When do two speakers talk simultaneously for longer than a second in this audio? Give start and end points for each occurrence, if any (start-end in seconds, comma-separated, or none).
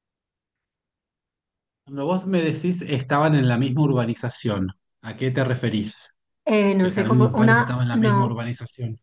6.8-8.4